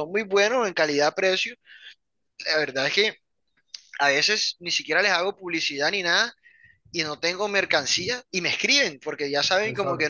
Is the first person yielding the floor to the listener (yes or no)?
no